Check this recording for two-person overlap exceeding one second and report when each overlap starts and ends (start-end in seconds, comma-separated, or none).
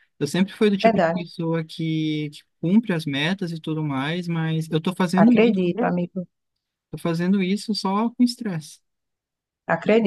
none